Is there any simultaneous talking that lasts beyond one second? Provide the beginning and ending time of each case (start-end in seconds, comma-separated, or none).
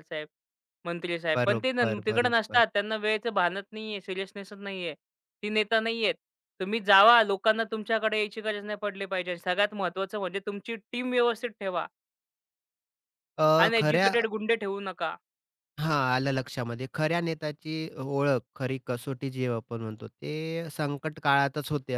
1.3-2.6